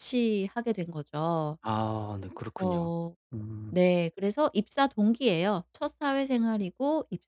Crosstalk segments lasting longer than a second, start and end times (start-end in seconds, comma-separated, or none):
none